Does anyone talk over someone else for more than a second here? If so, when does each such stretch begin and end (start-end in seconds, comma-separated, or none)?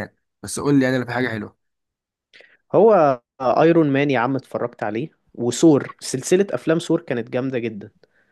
none